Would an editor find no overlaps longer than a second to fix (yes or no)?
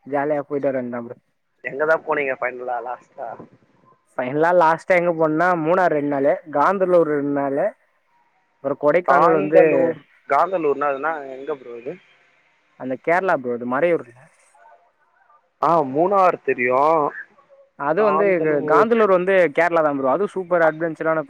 yes